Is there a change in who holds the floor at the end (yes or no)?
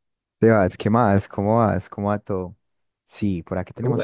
no